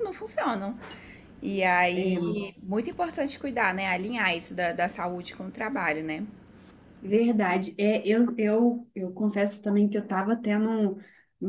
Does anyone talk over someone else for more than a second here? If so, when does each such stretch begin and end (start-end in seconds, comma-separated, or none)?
none